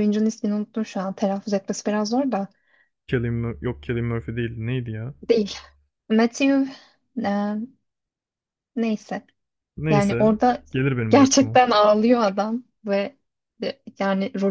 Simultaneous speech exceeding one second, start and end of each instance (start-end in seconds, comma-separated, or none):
none